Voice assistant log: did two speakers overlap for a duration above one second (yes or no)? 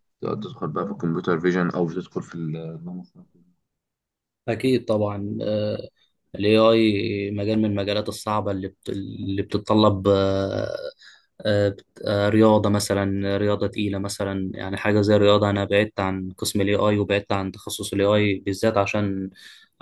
no